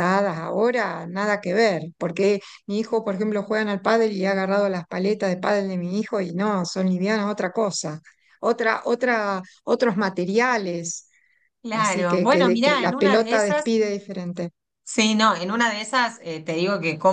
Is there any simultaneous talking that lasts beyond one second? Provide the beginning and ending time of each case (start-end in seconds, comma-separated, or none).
11.7-13.7